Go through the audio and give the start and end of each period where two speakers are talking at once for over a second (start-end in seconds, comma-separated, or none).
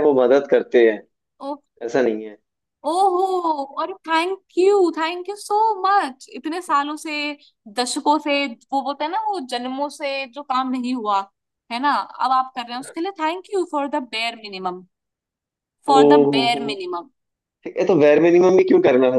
none